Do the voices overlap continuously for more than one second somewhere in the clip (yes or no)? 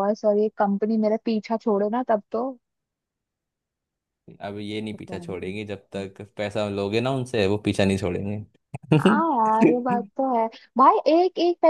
no